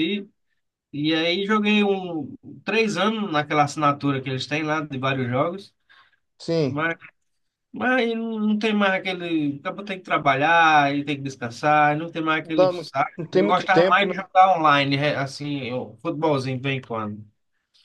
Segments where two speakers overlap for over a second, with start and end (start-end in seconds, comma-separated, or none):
12.4-14.1